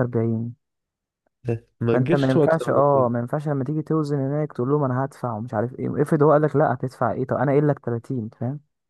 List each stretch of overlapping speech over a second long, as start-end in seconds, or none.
1.9-3.1